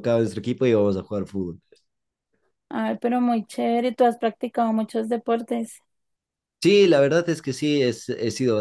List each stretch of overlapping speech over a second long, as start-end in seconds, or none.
none